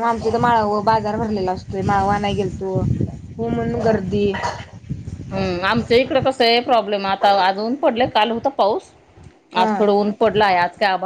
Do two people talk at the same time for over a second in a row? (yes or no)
no